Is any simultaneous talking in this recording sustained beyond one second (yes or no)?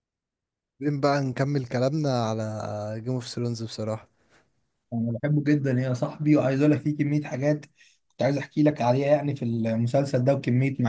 no